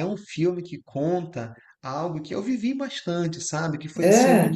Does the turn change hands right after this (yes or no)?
no